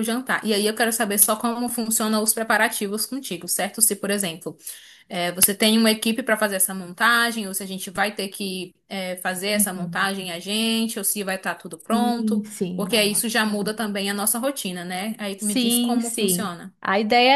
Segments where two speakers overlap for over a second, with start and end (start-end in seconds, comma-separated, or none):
11.9-13.8, 15.4-16.7